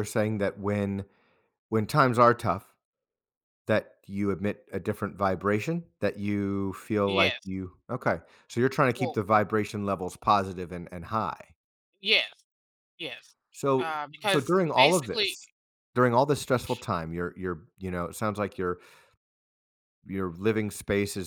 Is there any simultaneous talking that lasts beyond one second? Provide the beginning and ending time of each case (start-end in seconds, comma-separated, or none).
13.8-15.4